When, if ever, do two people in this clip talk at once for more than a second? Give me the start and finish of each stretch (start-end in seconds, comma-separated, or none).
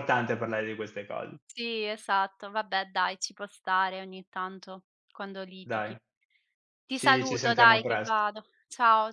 6.9-8.2